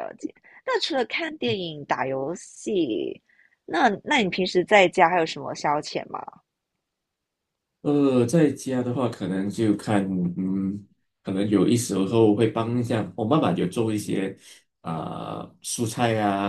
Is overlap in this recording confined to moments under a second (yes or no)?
yes